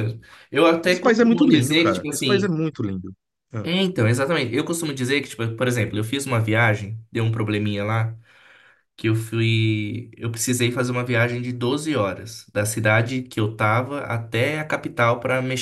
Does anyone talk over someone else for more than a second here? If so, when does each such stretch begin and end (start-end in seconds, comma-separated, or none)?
0.8-2.5